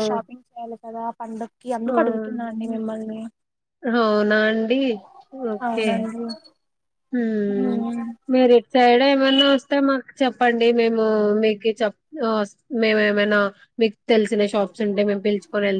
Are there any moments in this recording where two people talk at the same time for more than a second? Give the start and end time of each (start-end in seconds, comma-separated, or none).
none